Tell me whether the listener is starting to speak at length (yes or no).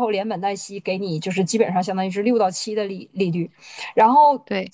no